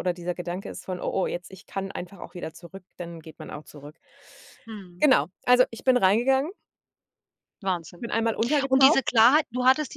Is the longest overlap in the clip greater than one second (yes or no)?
no